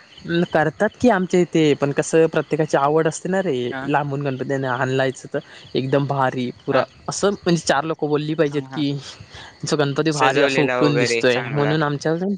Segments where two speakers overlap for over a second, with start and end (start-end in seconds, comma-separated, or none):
10.2-11.7